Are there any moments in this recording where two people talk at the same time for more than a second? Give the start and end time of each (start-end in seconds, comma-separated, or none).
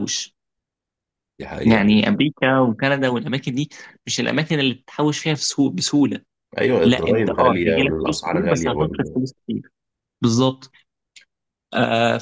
6.8-9.2